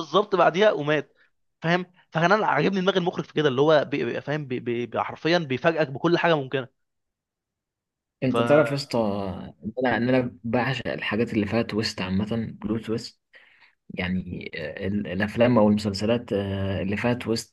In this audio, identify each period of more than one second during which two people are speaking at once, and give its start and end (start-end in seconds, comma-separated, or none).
none